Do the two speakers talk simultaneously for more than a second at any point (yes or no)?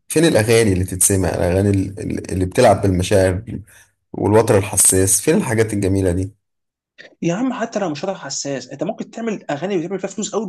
no